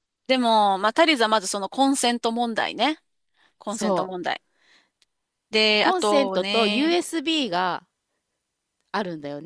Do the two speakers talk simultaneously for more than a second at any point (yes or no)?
yes